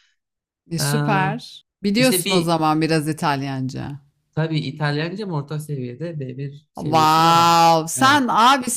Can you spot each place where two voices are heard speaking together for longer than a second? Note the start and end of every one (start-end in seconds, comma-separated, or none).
6.8-8.2